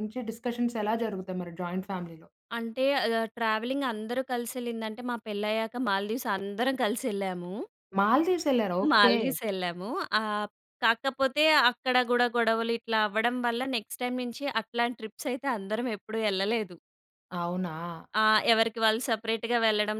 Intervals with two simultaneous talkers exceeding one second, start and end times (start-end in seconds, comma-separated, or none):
none